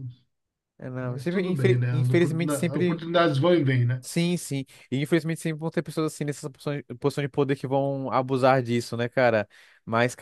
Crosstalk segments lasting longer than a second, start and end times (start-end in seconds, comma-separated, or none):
1.0-3.0